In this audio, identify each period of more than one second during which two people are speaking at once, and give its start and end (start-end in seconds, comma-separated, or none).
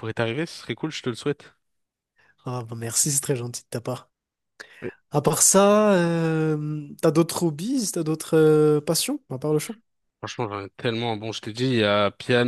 none